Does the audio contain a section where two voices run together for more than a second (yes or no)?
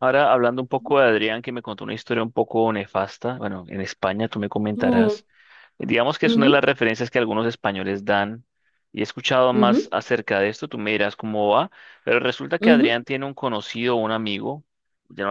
no